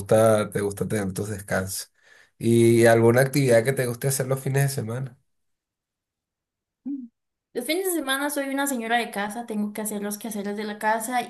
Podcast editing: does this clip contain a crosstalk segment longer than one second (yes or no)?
no